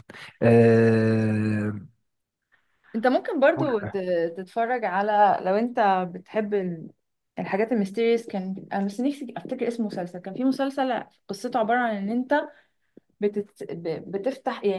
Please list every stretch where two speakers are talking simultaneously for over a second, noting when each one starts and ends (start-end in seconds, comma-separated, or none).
none